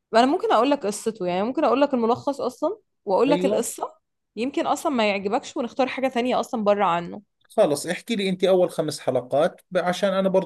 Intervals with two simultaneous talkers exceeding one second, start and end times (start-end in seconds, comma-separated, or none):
none